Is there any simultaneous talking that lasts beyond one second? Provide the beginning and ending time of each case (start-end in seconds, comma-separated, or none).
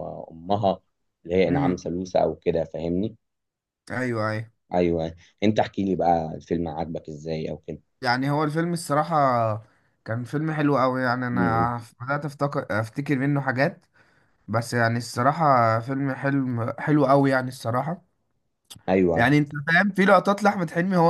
none